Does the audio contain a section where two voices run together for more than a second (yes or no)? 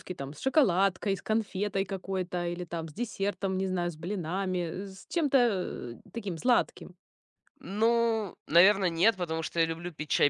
no